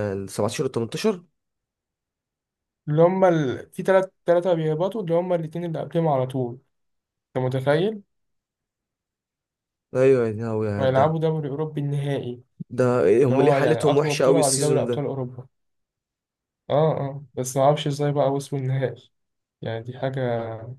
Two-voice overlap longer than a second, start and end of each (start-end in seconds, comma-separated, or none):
13.2-15.1